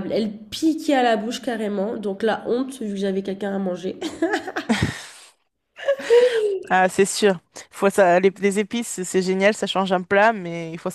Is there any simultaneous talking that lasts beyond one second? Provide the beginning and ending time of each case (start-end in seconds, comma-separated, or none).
none